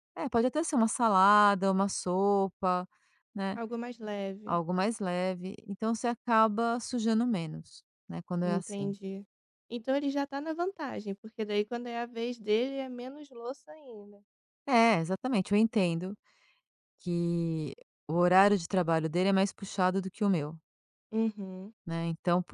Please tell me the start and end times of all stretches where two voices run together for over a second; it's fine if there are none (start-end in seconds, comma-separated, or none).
none